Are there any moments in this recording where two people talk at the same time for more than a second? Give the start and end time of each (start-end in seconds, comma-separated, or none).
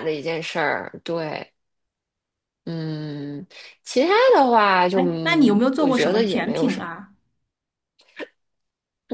4.9-6.8